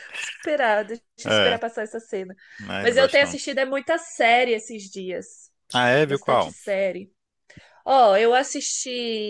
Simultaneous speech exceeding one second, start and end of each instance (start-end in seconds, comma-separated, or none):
none